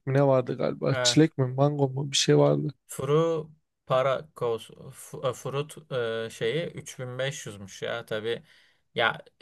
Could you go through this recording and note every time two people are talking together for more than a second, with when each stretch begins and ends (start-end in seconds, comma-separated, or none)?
none